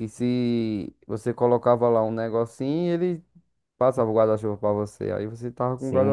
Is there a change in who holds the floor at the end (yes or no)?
yes